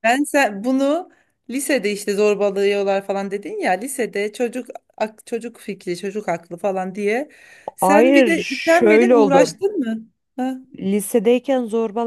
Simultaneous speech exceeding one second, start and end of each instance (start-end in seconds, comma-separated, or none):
7.8-9.6